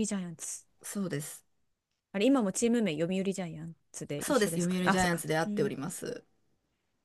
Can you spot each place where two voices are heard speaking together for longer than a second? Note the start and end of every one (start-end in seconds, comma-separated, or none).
4.2-5.8